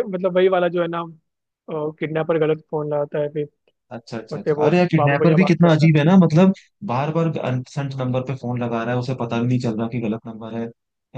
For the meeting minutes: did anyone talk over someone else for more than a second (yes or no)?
yes